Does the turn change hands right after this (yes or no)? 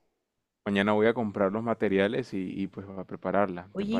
yes